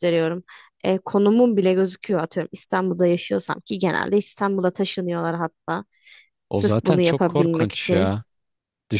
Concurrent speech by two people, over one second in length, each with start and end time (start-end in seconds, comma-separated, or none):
6.5-8.2